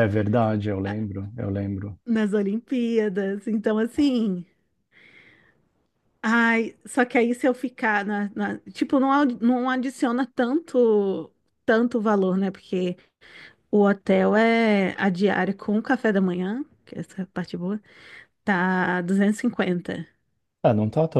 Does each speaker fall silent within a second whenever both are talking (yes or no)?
yes